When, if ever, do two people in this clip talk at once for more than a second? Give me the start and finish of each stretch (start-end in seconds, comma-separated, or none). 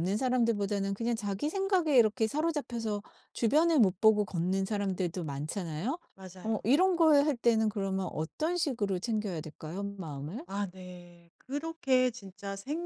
none